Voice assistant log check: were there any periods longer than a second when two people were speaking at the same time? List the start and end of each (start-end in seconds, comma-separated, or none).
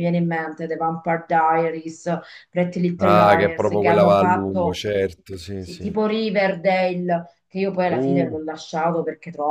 3.0-4.8